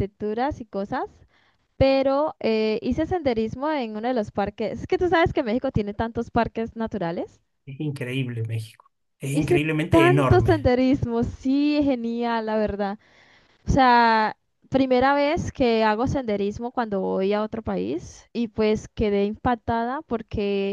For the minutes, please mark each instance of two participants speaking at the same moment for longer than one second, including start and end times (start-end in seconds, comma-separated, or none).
9.3-10.7